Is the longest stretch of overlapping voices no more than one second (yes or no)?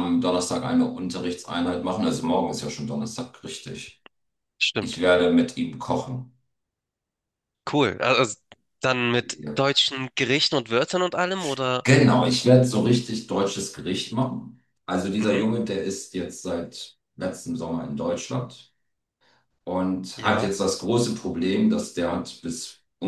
yes